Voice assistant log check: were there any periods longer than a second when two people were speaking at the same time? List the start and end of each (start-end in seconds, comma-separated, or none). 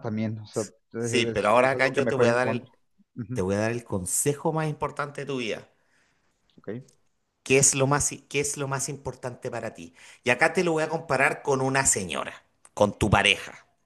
1.0-2.7